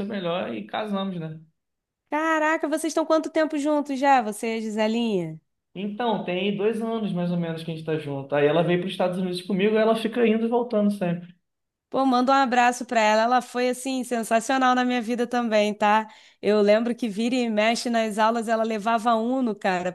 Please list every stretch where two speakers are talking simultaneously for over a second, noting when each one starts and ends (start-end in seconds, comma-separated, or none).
none